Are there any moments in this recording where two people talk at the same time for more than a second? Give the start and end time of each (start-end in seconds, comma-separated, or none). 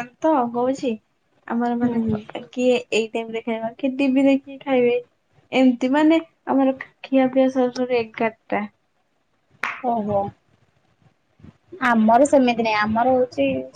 none